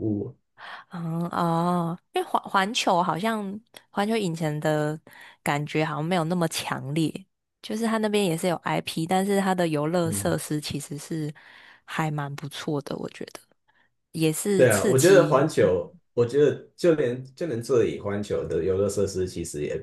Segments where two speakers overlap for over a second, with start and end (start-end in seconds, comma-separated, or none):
14.6-15.8